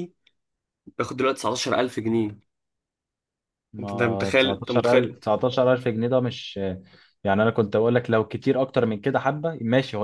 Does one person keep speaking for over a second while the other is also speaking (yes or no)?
yes